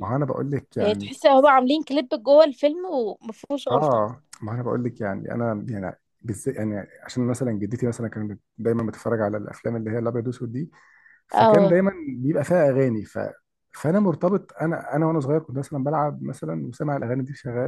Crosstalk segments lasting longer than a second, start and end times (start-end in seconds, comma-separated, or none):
none